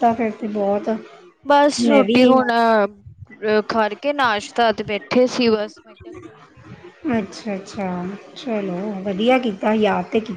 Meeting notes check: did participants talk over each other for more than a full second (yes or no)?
no